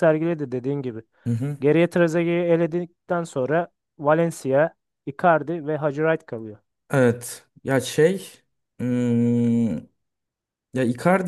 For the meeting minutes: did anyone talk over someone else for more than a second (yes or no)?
no